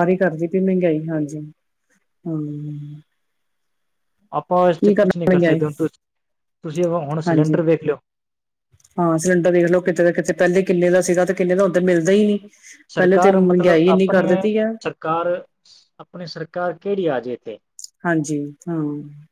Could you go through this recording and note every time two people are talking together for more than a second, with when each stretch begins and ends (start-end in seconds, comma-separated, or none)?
12.9-14.3